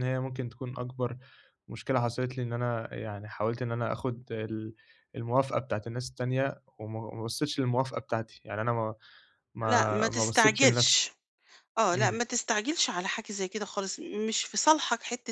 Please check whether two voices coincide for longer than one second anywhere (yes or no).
yes